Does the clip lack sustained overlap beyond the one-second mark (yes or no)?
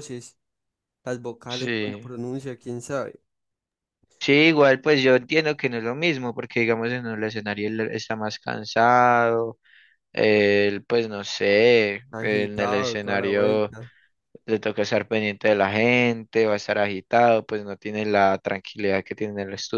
no